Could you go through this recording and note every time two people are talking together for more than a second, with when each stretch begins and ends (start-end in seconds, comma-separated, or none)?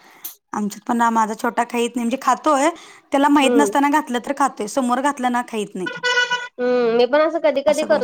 none